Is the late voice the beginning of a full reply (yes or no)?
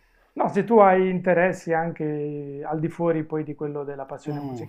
yes